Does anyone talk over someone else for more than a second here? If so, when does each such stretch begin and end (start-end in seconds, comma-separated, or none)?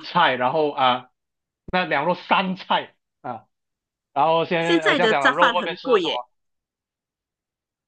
4.6-6.2